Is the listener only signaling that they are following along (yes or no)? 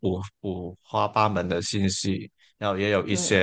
yes